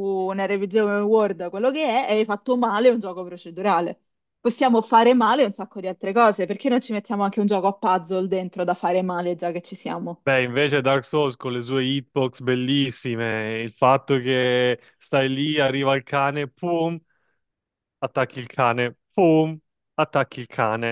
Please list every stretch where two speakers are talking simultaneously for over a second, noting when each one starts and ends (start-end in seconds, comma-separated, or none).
none